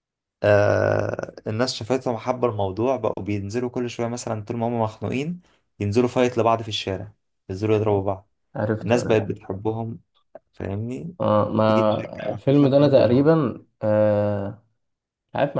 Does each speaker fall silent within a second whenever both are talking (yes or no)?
no